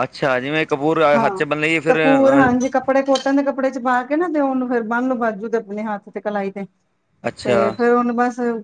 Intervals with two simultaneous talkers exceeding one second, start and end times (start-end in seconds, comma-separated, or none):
none